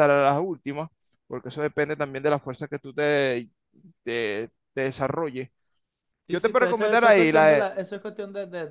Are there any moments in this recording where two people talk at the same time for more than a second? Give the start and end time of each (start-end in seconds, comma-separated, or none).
6.3-7.7